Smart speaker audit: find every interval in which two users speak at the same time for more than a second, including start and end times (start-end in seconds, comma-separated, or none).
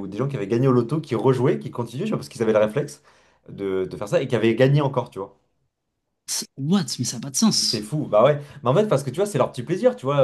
none